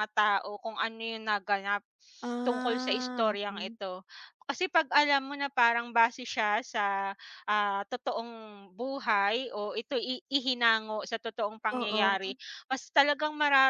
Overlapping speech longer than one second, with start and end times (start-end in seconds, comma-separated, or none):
2.5-3.8